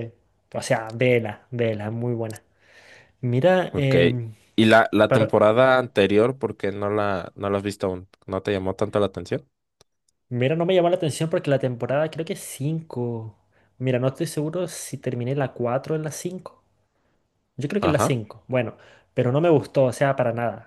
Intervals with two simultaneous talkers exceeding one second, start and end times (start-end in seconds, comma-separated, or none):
none